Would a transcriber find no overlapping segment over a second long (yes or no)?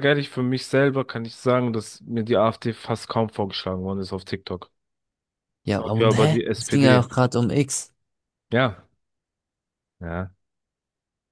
no